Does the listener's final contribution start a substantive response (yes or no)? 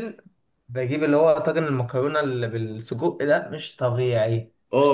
yes